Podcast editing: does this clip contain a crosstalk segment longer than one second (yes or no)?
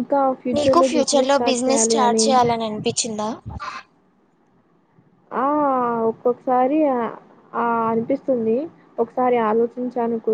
yes